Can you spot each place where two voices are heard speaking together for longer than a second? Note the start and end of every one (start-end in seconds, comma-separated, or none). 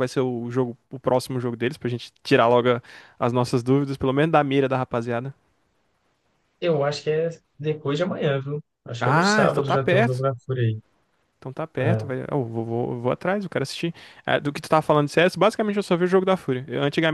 9.0-10.3